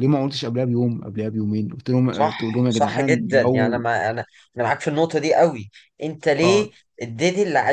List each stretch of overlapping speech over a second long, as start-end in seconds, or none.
2.1-3.8